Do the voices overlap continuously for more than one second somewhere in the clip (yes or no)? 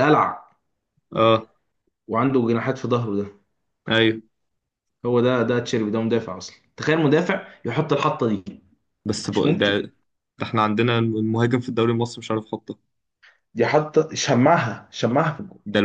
no